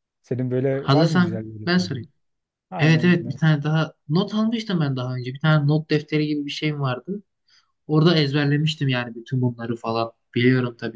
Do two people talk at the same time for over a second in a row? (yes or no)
yes